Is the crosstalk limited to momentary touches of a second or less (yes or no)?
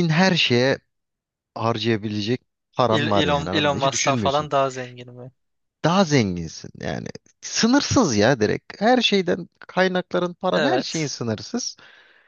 no